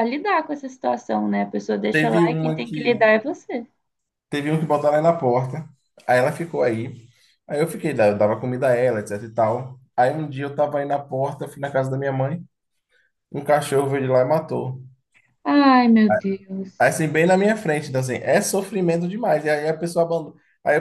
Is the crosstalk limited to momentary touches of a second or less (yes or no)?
no